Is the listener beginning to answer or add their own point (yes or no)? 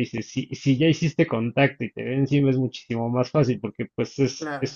no